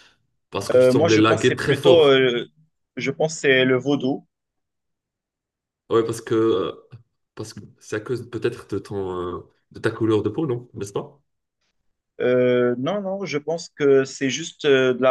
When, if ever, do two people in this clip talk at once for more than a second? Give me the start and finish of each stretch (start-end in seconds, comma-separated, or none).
0.7-2.2